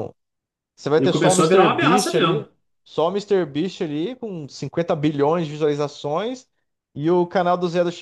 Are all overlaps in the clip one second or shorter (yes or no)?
no